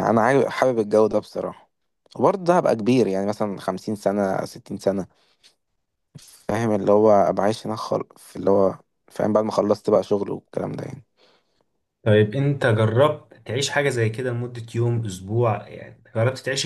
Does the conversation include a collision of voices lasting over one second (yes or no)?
no